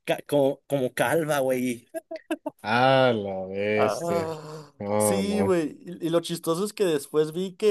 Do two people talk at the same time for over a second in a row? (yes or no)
no